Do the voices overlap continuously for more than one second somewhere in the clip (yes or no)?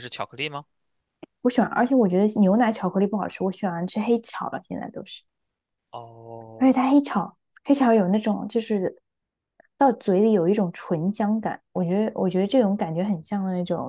no